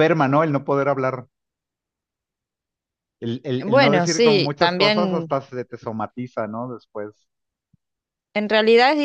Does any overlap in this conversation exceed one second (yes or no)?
yes